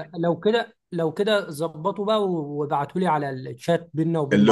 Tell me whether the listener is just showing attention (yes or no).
no